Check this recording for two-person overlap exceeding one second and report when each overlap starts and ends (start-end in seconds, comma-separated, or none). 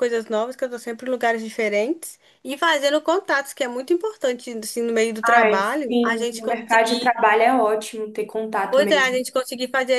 5.2-7.1